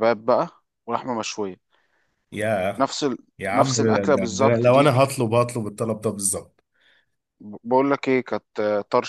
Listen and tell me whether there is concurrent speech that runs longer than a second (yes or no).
yes